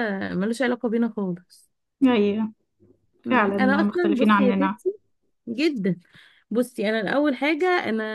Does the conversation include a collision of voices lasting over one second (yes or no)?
yes